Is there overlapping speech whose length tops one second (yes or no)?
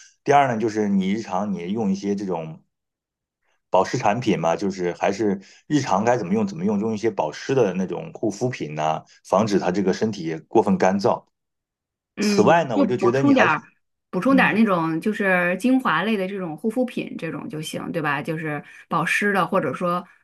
yes